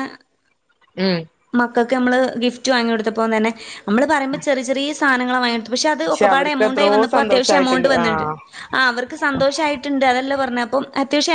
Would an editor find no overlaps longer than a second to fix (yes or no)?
no